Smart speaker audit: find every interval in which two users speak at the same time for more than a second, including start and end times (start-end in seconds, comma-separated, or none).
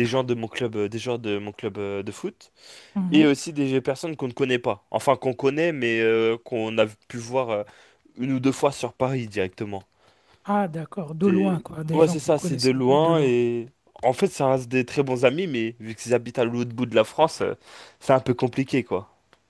11.2-13.3